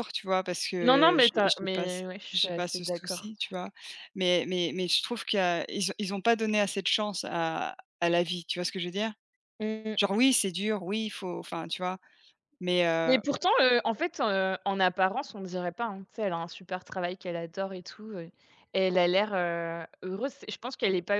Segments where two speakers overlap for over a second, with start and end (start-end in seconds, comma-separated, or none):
0.8-3.3